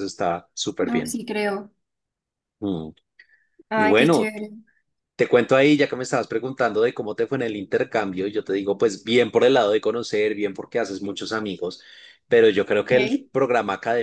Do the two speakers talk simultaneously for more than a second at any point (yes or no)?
no